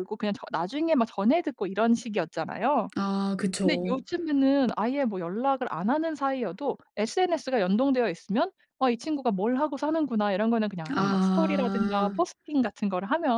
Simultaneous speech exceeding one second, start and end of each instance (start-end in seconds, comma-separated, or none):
10.9-12.2